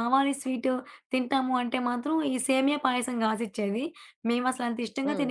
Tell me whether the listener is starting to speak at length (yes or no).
no